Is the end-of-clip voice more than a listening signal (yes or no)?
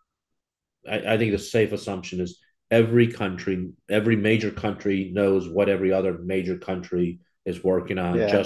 yes